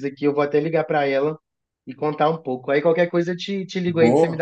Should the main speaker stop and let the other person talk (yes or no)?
yes